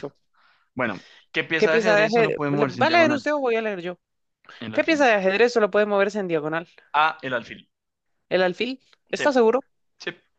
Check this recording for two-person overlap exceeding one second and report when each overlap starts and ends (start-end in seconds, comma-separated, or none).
1.6-3.2